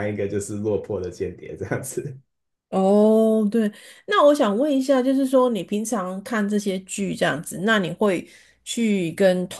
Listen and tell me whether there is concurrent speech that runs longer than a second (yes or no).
no